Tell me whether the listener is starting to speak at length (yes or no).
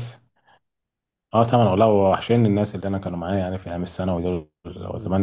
no